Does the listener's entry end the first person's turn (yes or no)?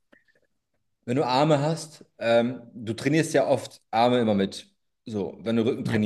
no